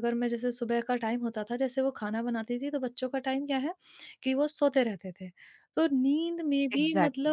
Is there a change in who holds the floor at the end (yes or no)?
no